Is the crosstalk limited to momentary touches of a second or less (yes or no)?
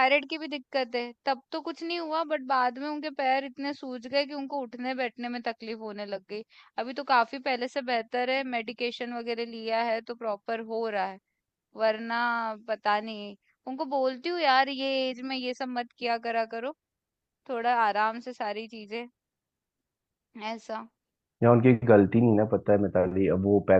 yes